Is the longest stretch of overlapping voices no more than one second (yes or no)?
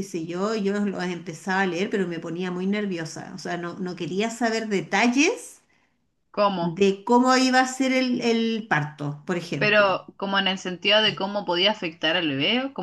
yes